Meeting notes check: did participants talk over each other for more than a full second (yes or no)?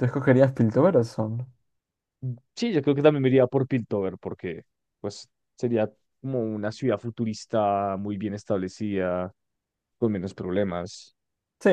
no